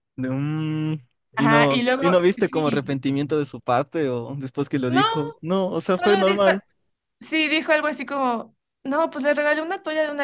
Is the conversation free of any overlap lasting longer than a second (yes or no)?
no